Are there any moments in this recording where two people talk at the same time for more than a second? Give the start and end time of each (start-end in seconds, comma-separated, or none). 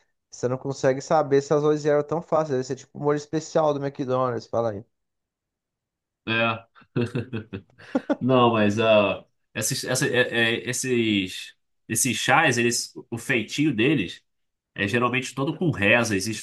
none